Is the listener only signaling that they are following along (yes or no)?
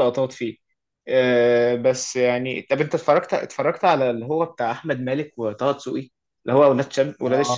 no